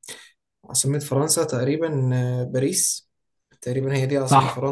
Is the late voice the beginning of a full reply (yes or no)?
yes